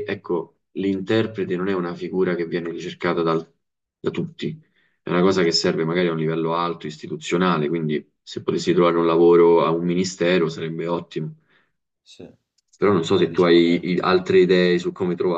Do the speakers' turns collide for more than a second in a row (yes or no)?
yes